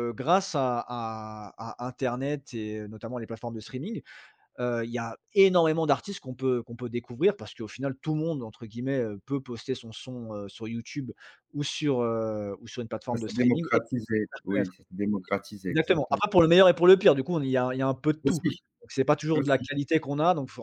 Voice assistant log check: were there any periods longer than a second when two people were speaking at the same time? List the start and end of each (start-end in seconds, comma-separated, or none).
13.1-14.7